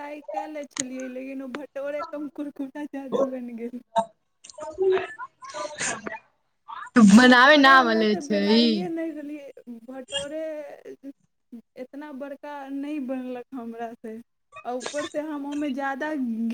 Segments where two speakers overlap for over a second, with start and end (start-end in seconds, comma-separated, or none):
7.2-8.6